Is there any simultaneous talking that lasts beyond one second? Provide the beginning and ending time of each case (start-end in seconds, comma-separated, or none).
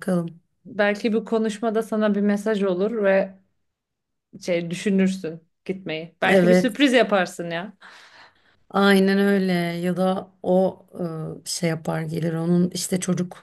none